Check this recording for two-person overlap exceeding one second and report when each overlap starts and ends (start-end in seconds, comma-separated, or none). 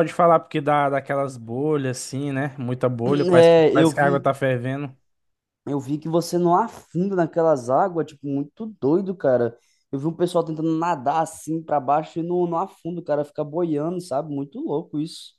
3.0-4.3